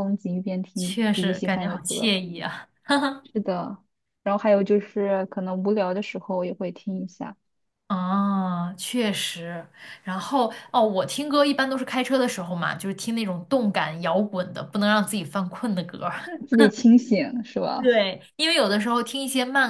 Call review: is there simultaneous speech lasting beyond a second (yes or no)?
yes